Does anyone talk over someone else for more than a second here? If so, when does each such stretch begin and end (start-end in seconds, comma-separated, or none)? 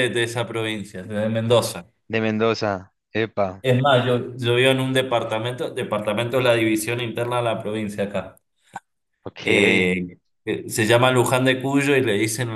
none